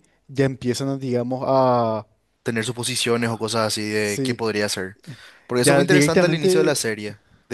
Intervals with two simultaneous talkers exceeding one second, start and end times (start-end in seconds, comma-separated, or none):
5.6-6.8